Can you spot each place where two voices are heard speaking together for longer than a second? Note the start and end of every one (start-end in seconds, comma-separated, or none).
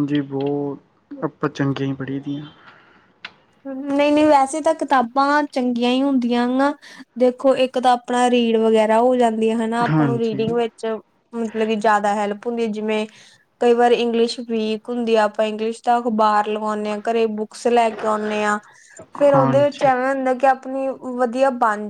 none